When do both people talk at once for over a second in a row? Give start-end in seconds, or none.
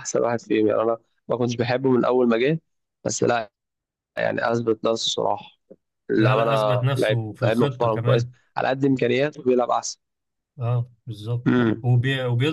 6.2-8.3